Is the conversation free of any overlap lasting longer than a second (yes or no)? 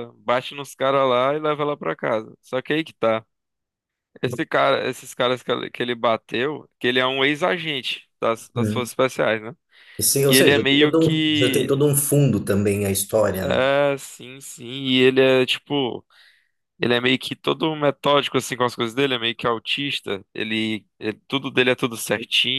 no